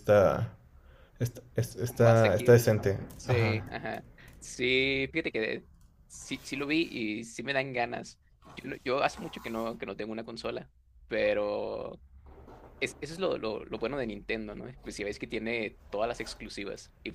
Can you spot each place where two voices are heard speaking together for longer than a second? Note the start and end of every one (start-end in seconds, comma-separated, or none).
1.9-3.7